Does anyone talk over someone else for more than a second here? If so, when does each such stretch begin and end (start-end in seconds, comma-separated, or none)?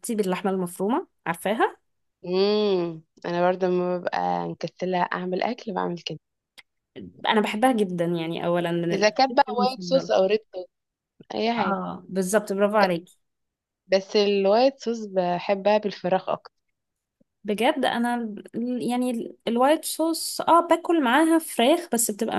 8.9-10.1